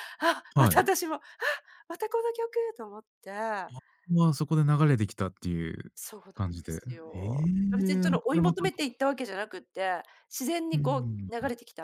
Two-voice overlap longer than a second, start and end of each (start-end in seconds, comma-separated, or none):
6.3-8.6